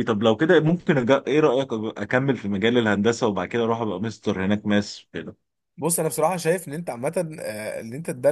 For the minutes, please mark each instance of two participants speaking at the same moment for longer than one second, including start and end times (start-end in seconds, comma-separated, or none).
none